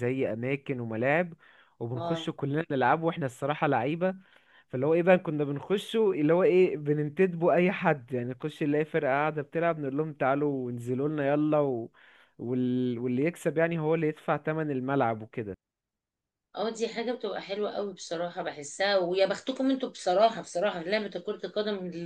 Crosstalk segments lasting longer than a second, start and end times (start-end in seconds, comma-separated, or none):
none